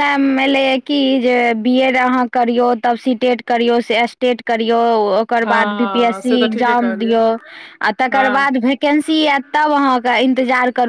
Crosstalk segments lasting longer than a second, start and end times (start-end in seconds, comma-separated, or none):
5.4-7.2